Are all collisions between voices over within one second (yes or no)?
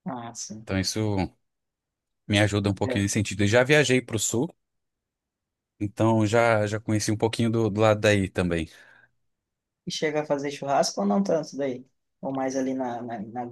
yes